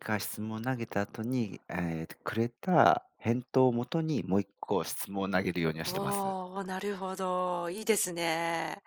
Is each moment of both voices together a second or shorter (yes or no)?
yes